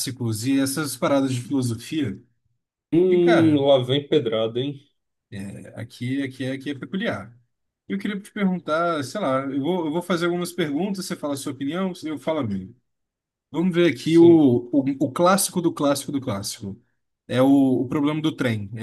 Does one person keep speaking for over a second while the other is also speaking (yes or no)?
no